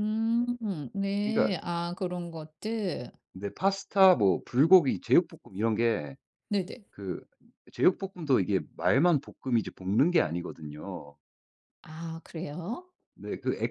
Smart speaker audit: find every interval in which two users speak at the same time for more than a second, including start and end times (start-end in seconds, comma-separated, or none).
none